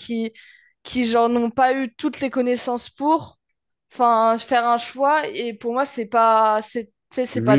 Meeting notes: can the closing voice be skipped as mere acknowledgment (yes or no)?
no